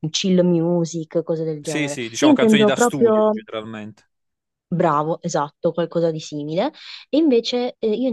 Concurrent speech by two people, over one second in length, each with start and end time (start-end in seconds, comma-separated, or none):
1.6-3.4